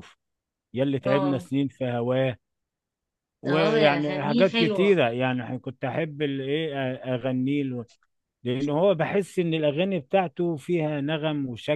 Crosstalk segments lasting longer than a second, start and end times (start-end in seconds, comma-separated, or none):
3.5-5.0